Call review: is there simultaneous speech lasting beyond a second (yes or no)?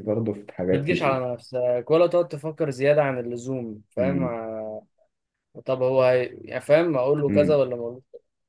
no